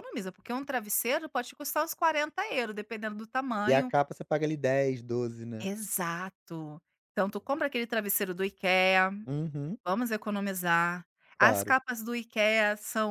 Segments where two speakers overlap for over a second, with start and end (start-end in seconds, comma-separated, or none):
none